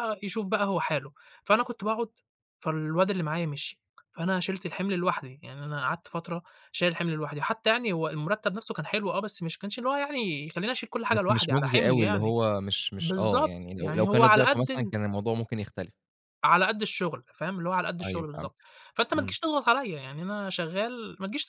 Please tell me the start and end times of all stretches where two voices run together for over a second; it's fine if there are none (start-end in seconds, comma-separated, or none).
11.1-12.3, 13.0-14.9